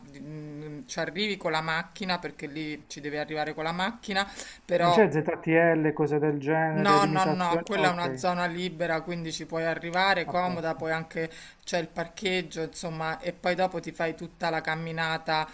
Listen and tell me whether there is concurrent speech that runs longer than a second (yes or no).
yes